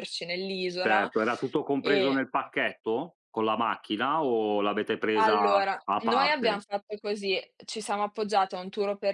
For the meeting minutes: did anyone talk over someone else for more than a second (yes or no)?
yes